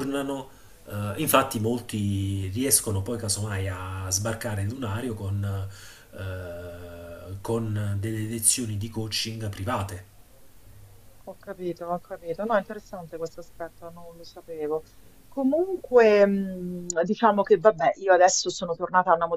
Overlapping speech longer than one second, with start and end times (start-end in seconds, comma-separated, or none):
none